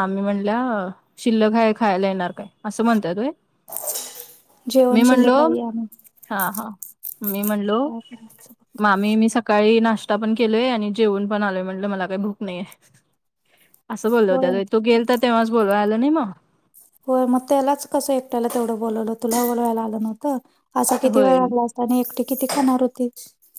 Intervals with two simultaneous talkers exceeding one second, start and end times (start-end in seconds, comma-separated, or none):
none